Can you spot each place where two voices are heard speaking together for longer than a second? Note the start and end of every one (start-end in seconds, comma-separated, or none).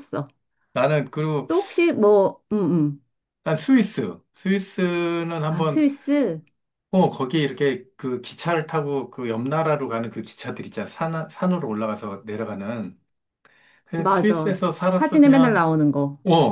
14.0-15.7